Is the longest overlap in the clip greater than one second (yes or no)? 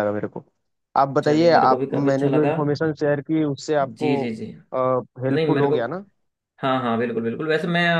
yes